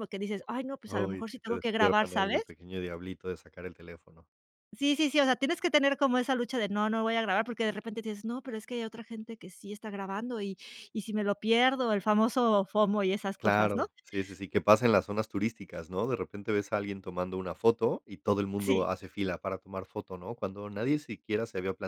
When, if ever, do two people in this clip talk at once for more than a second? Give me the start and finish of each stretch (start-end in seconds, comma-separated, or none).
0.9-2.4